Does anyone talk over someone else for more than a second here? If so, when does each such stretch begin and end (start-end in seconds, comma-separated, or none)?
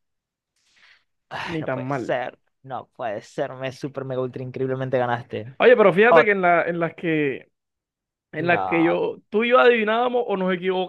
none